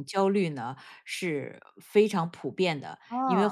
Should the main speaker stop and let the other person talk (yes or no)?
no